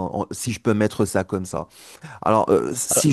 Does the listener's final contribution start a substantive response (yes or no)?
no